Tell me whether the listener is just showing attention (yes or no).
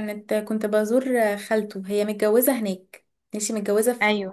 yes